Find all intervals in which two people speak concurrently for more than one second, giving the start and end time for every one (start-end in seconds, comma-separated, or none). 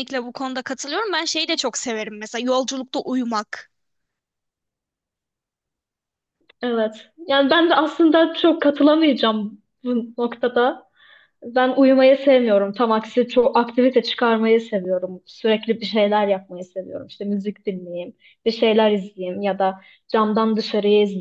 none